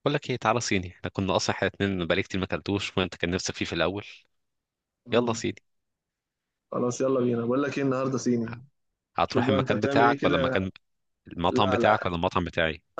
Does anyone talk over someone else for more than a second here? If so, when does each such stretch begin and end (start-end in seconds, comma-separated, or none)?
9.3-10.6